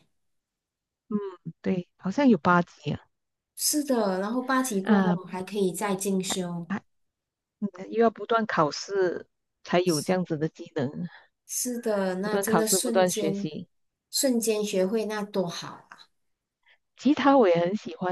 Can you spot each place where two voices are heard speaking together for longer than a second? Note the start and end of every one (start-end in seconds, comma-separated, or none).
12.2-13.5